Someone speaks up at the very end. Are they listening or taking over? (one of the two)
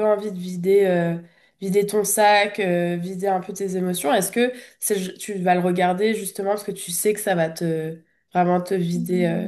taking over